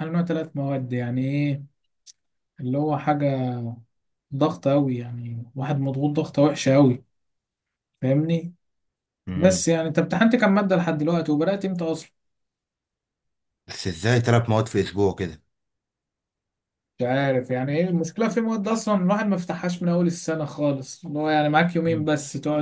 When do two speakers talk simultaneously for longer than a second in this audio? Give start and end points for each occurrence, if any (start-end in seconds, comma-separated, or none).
none